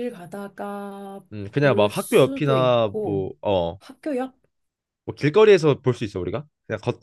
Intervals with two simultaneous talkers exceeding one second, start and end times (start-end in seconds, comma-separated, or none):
1.6-3.2